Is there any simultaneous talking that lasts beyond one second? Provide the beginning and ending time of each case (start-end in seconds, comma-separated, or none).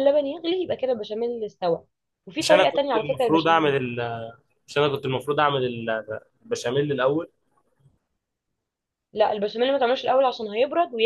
2.4-3.7